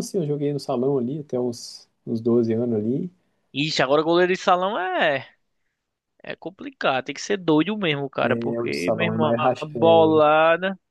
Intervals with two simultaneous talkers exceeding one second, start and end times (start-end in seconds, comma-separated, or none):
8.2-10.1